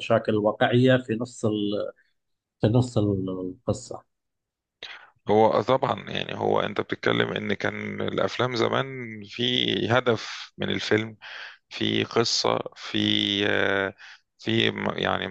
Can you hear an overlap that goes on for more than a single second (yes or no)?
no